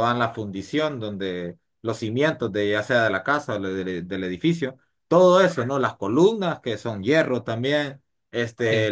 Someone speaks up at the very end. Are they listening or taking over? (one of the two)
listening